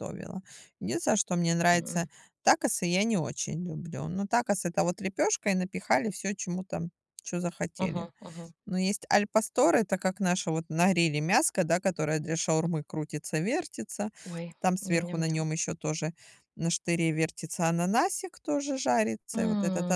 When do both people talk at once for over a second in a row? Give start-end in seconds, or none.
none